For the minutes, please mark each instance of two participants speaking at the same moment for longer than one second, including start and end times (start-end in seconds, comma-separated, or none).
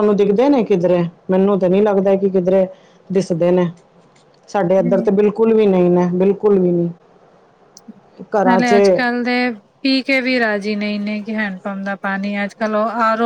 none